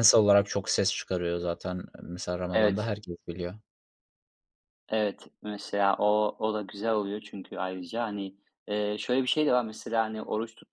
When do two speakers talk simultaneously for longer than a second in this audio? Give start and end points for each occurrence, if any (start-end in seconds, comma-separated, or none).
none